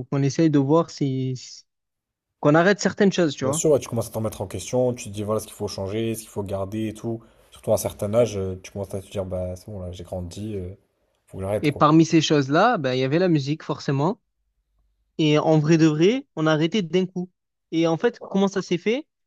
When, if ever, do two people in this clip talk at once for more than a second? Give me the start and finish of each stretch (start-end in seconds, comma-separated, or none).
none